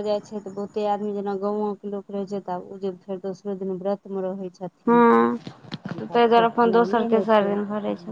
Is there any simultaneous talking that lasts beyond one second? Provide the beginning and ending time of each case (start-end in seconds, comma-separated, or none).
5.9-7.6